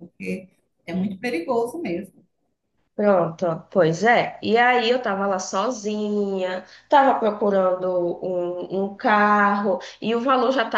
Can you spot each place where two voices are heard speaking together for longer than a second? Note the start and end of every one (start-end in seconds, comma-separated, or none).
none